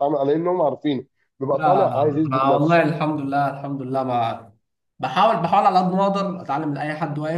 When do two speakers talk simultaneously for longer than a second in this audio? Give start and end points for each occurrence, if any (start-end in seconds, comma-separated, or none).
1.5-2.8